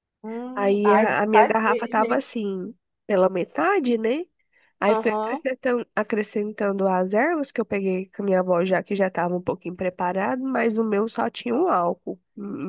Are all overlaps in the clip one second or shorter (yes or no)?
no